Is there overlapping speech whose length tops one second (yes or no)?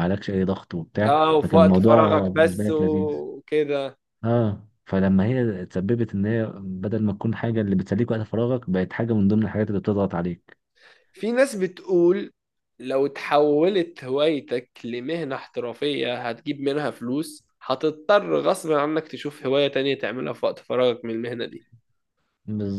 yes